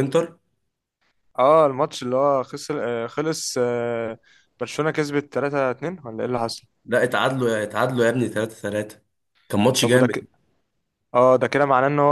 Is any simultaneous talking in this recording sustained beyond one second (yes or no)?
no